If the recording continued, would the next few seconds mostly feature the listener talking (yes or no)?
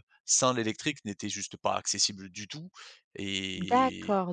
yes